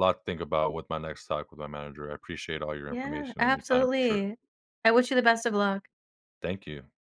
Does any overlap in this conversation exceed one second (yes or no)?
yes